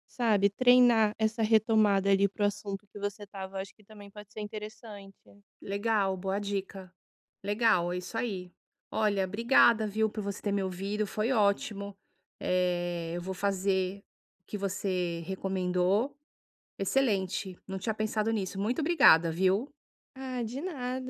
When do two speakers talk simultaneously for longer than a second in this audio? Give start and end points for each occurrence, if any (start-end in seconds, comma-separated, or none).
none